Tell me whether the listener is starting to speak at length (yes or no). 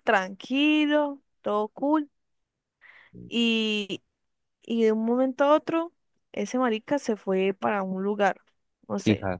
no